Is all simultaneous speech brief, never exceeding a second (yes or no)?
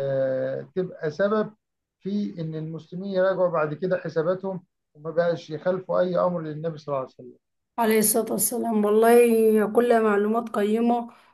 yes